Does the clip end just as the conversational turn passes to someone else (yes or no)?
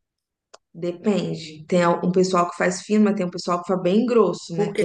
yes